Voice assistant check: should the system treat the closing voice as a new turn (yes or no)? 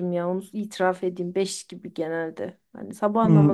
yes